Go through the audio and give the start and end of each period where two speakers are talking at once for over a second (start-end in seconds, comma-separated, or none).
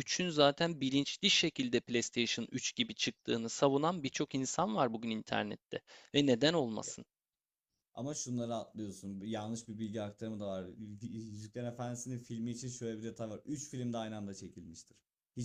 none